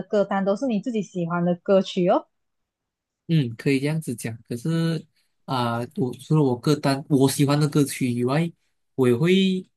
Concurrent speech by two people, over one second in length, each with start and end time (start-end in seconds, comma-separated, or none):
none